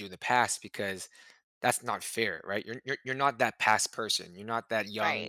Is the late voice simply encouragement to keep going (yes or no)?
yes